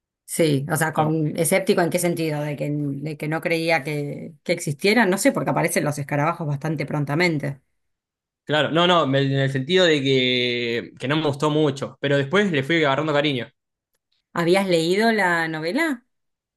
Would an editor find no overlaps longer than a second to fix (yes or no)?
yes